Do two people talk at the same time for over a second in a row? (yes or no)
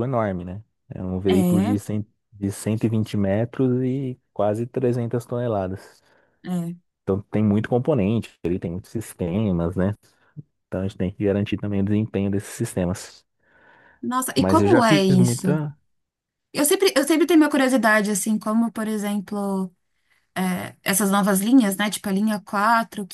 yes